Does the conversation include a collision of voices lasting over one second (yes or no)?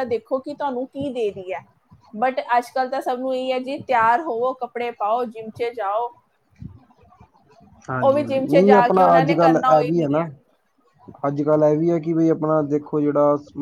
yes